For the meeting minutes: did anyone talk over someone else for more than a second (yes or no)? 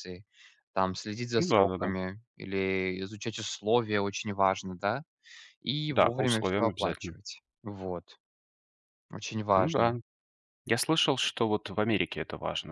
yes